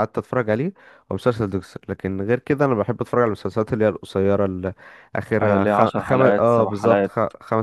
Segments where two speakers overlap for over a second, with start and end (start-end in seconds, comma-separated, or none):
5.4-7.1